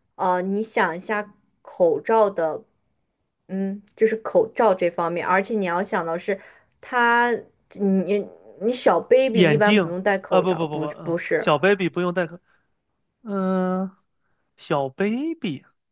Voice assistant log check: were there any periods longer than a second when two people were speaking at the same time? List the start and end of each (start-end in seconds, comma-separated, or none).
9.3-11.5